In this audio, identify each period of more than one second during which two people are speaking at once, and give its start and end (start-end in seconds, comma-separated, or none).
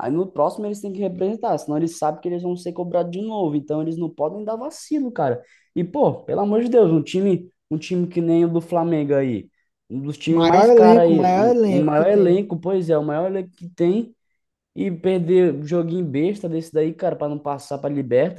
10.3-12.4